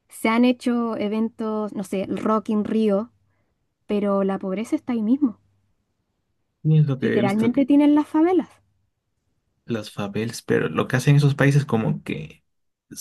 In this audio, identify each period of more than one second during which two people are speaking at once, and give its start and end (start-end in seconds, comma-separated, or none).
none